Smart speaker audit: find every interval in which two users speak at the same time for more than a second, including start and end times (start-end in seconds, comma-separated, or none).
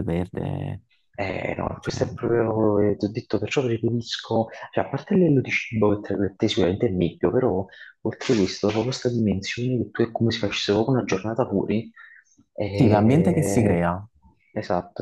12.7-13.9